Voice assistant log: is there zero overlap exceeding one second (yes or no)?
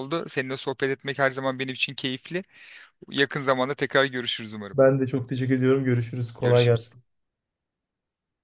yes